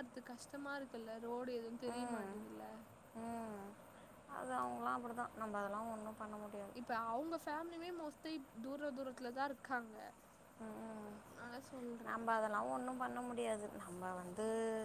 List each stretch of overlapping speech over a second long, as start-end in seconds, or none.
none